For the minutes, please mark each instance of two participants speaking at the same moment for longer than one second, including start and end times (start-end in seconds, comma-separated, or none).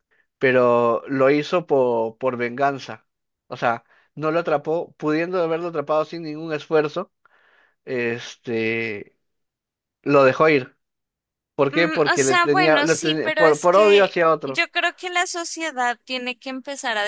11.7-14.6